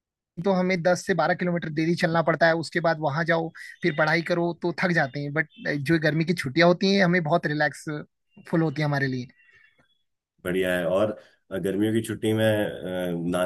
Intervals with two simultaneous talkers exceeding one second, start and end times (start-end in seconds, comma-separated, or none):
none